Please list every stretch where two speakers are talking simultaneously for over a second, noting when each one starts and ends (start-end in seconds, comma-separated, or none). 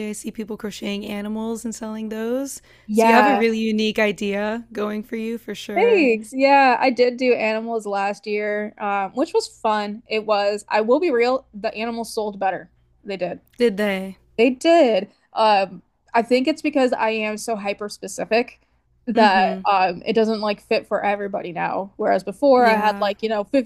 none